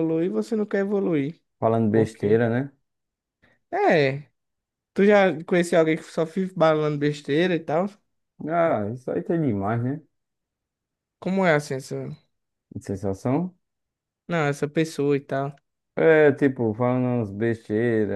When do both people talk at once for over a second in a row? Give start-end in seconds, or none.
none